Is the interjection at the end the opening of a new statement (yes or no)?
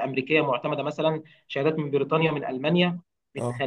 no